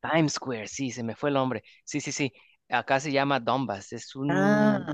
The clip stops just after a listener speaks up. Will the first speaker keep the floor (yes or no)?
yes